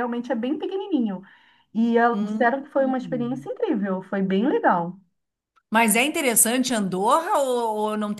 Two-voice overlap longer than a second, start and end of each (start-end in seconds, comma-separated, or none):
2.1-3.5